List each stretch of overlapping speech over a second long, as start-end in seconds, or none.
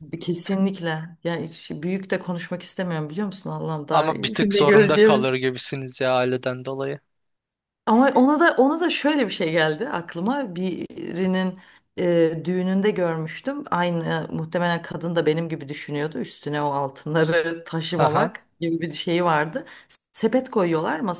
3.9-5.3